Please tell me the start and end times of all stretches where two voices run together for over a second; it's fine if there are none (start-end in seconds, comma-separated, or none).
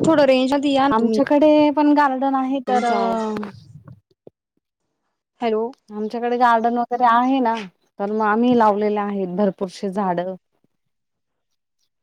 none